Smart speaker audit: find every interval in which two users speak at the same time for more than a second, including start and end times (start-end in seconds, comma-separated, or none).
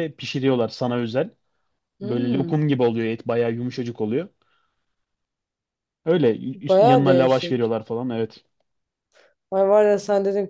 6.5-7.7